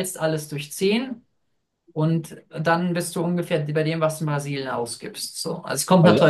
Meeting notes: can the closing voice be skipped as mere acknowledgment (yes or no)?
yes